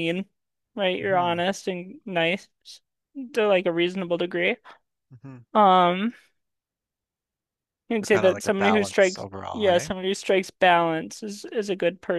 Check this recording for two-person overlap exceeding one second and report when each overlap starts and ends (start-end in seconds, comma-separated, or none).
8.1-9.9